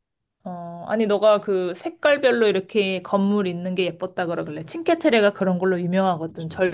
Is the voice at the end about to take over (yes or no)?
no